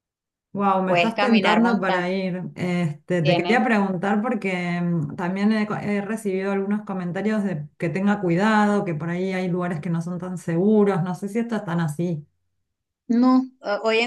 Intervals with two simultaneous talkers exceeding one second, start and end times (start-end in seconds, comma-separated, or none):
0.9-2.1